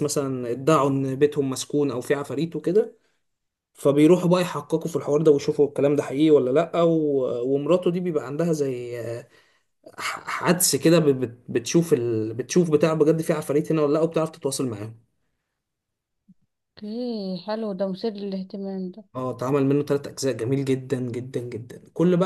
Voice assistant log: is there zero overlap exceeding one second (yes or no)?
yes